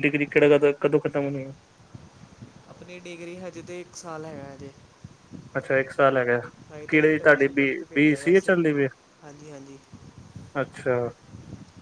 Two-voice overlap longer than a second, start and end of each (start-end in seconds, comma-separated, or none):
6.9-8.6